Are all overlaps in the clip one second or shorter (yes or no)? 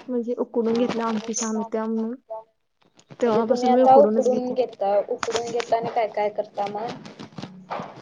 no